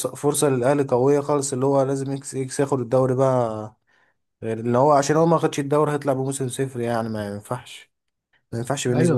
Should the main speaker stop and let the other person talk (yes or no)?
yes